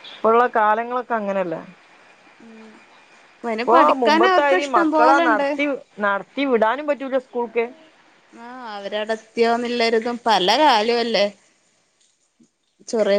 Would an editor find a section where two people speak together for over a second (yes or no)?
yes